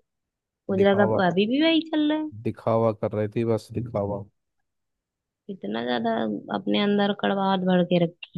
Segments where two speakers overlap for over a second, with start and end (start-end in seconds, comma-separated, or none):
none